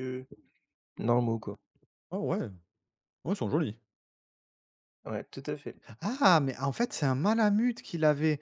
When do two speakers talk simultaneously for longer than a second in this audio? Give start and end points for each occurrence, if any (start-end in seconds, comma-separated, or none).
none